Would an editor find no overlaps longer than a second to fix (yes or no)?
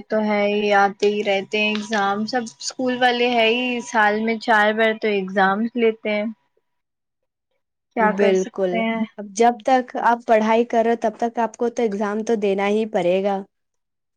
yes